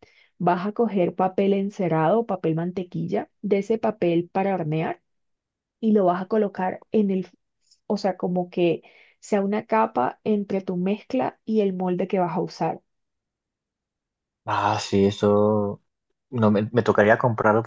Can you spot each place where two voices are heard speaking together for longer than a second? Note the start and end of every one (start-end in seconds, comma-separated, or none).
none